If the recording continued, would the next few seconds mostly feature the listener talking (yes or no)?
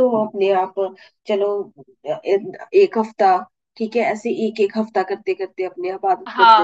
yes